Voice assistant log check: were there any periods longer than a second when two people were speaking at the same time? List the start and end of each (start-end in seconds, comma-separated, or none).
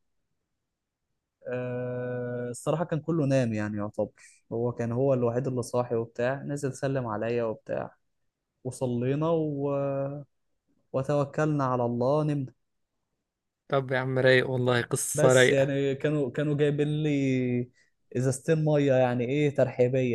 none